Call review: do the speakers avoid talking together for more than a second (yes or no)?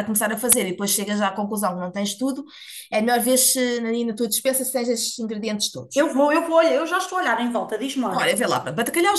yes